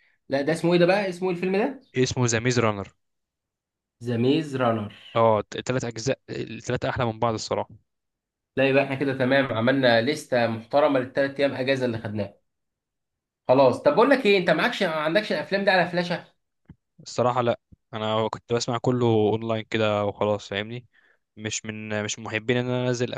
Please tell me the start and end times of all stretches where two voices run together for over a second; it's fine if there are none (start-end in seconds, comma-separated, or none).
none